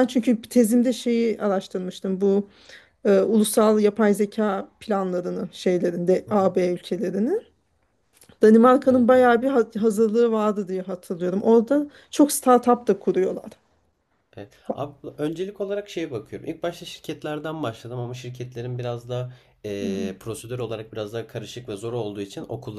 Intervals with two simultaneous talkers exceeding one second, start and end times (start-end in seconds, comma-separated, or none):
none